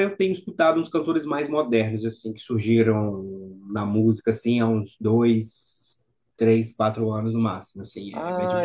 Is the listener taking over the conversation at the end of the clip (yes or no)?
yes